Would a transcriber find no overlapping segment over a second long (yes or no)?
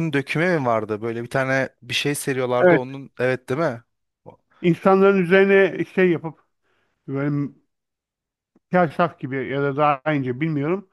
yes